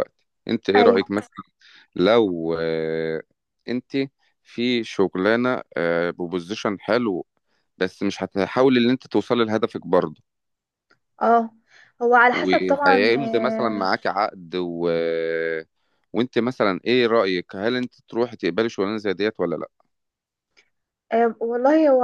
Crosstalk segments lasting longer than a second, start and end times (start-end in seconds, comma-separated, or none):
12.3-13.9